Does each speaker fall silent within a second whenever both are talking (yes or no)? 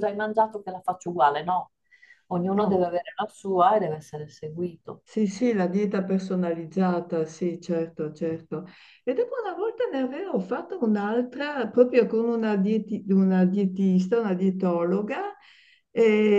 yes